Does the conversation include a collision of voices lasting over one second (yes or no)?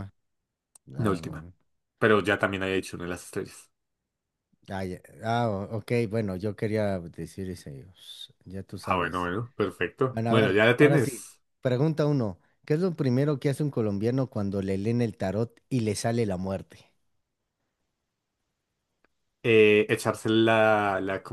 yes